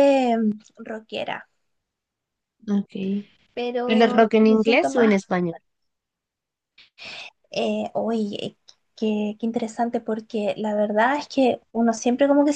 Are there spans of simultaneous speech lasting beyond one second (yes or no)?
yes